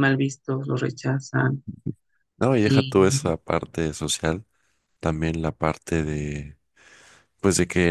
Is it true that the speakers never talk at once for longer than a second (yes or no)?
yes